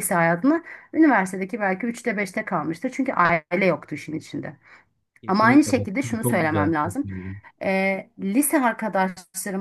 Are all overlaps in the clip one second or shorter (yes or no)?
no